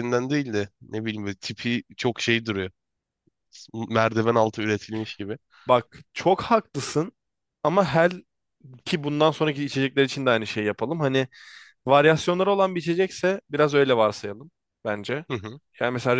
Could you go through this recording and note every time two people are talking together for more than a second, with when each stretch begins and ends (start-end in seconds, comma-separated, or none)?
none